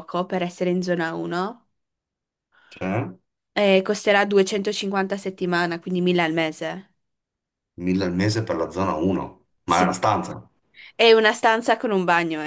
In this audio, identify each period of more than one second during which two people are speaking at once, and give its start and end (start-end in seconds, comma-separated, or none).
none